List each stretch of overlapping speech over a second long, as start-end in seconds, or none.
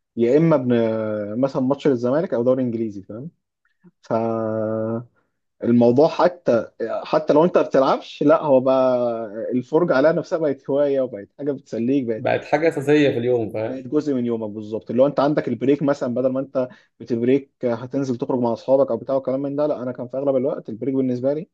none